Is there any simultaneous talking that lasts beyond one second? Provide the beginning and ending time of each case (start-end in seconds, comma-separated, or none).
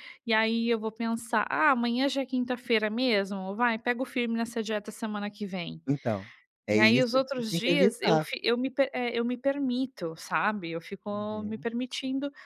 6.7-8.2